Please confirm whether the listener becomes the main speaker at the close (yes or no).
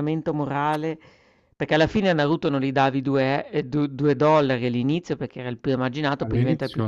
yes